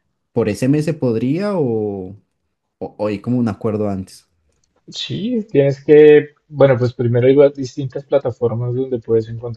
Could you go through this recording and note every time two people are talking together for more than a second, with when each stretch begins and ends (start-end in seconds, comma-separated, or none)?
none